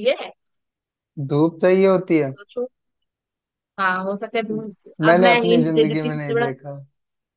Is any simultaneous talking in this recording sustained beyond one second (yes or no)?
yes